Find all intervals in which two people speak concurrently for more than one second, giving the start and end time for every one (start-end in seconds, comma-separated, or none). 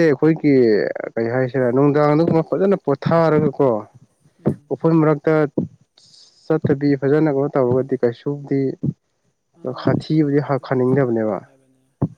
9.8-11.4